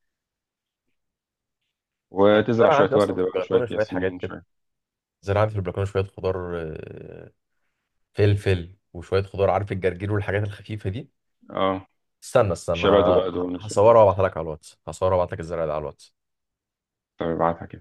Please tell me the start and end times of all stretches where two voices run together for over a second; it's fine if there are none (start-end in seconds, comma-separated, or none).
2.3-4.3, 12.7-14.2